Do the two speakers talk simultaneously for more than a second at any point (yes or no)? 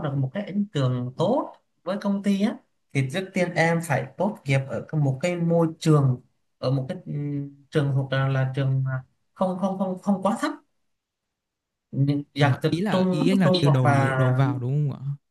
yes